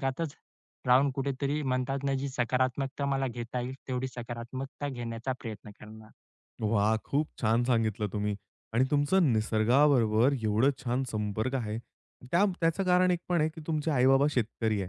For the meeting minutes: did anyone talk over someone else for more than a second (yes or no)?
no